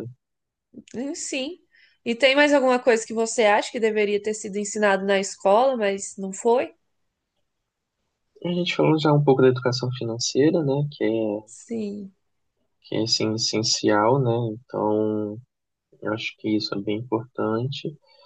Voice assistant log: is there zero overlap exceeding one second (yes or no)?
yes